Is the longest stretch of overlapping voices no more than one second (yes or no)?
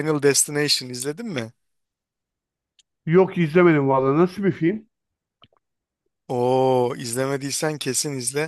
yes